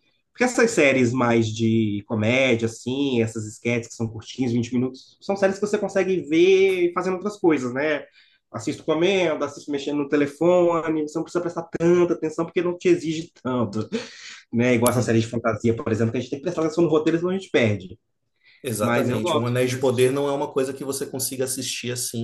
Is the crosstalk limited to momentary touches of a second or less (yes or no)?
no